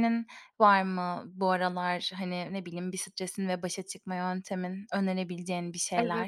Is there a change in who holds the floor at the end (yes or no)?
yes